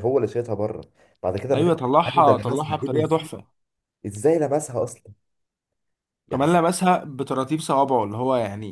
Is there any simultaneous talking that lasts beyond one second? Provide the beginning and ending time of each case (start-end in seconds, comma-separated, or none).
1.5-3.3